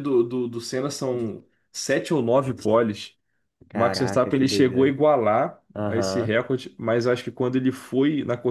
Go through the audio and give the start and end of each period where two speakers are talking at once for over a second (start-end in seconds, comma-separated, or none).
3.7-4.9